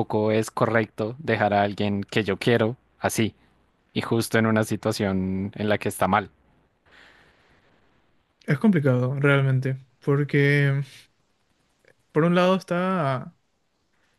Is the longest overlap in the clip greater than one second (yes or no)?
no